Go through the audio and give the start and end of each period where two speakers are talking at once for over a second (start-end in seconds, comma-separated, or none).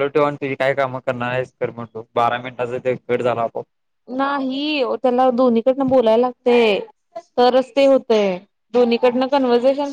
none